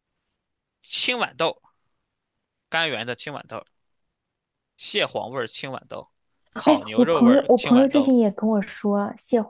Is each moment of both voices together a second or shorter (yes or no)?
no